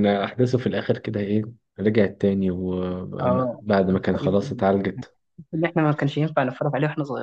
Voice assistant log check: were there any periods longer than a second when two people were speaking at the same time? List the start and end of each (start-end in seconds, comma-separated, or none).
3.2-4.6